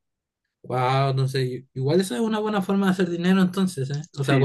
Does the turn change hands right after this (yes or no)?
no